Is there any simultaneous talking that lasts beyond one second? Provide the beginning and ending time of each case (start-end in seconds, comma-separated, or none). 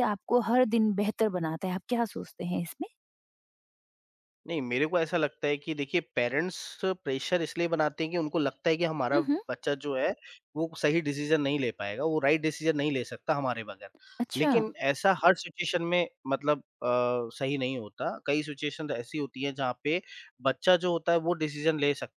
none